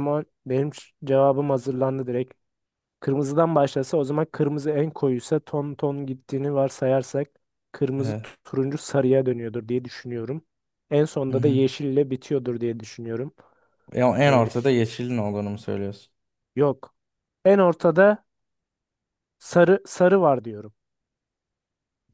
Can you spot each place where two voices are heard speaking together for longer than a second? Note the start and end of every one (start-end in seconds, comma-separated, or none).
none